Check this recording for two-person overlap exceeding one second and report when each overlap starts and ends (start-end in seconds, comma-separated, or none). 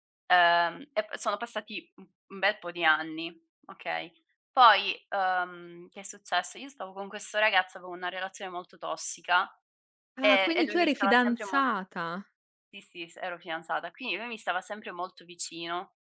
10.2-11.6